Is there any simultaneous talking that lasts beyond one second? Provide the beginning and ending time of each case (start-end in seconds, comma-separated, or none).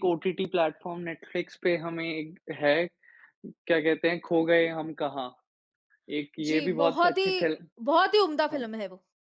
6.4-7.7